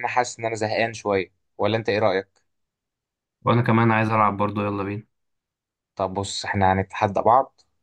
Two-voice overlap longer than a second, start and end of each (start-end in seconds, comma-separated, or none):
none